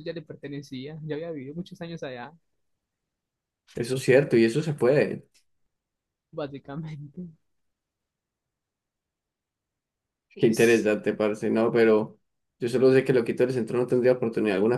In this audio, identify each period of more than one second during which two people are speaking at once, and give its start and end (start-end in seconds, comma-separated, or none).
none